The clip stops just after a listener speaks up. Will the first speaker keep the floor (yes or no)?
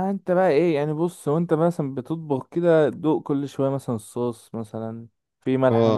no